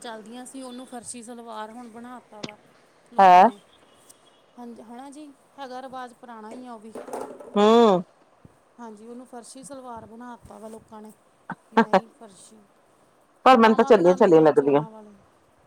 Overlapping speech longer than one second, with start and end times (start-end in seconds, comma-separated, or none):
13.5-14.8